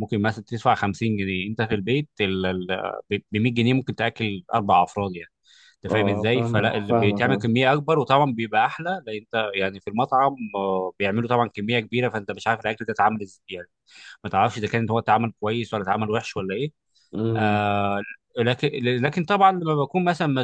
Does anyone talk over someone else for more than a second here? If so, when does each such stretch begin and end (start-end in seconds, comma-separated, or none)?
5.9-7.5